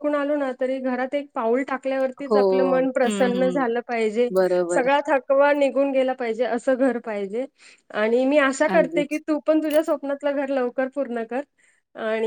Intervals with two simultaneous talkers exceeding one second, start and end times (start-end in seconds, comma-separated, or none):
none